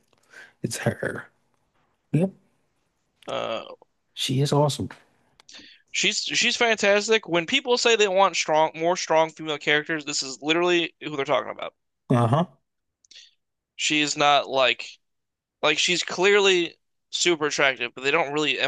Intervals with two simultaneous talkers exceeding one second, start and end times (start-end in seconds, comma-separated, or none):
none